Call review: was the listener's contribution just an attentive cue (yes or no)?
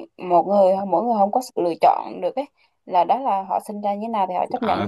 no